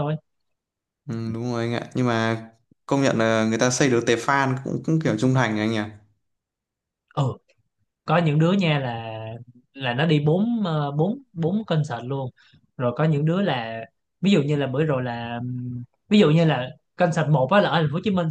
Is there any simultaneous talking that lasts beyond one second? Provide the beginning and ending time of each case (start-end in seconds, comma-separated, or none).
none